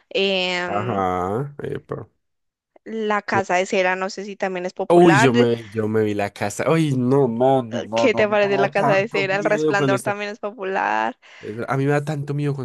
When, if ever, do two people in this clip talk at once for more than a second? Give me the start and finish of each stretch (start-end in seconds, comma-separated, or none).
7.9-10.1